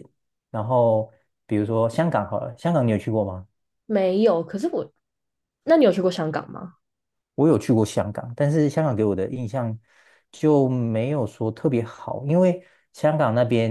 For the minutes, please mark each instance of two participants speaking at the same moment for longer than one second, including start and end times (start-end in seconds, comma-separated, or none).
none